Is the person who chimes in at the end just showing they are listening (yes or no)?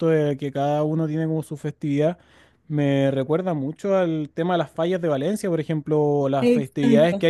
yes